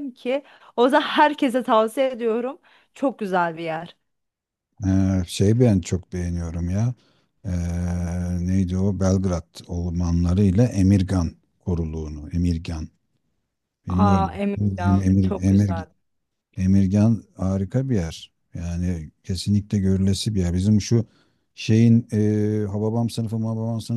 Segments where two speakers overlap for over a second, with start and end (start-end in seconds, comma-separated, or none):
13.9-15.9